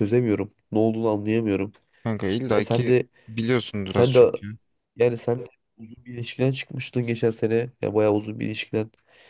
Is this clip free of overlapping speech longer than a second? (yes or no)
yes